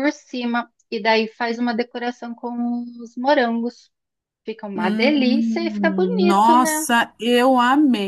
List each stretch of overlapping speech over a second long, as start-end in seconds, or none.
4.7-6.9